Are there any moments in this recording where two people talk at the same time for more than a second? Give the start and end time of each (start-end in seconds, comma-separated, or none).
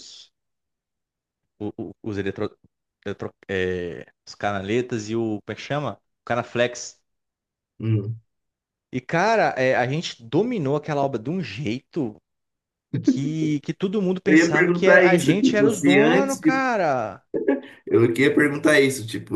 14.3-16.6